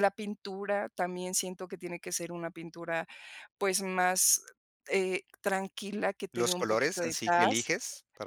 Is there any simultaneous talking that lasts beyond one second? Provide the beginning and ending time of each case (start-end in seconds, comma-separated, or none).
6.3-7.7